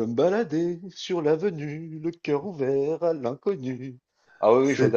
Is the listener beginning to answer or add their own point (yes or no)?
no